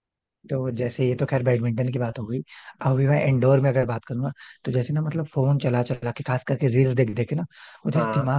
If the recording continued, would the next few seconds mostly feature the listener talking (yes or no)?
no